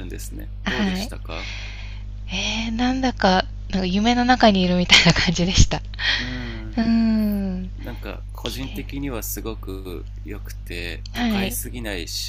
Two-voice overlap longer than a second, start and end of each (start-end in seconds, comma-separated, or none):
none